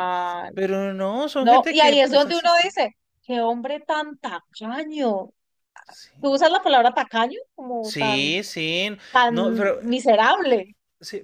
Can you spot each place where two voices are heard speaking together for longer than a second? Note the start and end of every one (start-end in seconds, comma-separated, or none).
1.4-2.7